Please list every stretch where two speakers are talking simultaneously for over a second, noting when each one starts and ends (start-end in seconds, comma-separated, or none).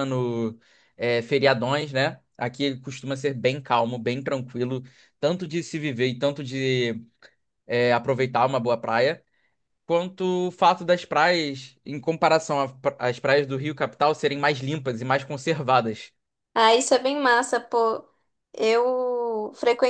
none